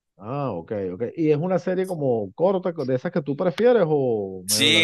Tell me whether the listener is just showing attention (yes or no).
no